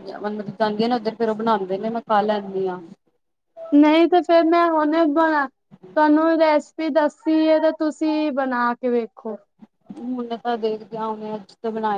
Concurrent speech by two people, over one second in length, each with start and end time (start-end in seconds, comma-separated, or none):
none